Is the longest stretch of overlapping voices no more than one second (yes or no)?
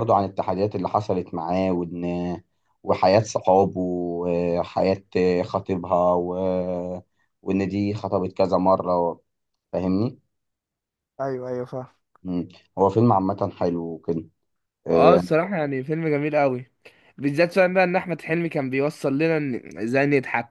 yes